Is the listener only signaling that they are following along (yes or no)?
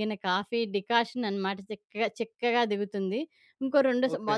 yes